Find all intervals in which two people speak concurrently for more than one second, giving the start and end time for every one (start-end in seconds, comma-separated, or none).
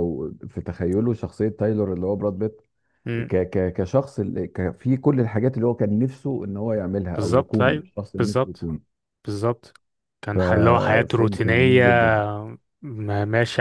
7.1-8.7, 10.3-11.8